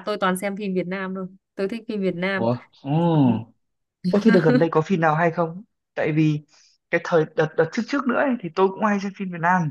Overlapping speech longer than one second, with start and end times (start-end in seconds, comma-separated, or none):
none